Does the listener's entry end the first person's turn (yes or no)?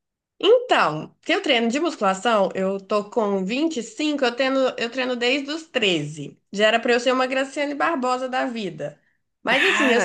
no